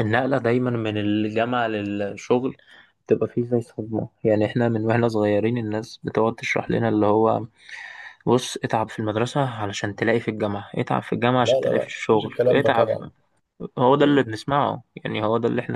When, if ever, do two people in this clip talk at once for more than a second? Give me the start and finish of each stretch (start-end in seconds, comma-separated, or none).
11.4-12.9